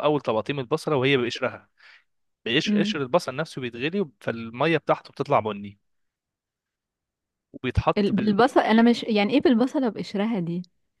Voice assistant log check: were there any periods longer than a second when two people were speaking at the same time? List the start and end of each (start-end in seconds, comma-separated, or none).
none